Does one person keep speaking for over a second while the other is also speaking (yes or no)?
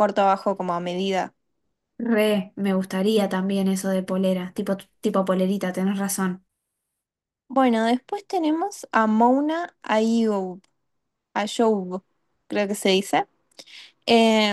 no